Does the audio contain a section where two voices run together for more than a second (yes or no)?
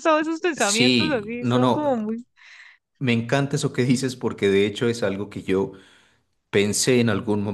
yes